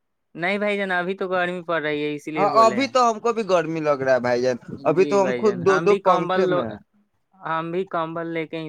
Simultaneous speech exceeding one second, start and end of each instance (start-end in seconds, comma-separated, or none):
5.0-6.6